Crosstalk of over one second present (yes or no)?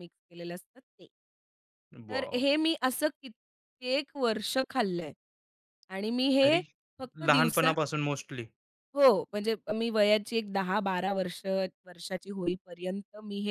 no